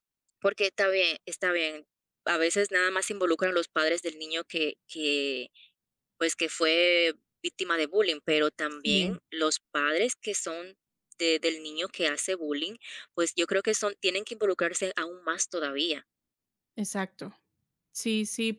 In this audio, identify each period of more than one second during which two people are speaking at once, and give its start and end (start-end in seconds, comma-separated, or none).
none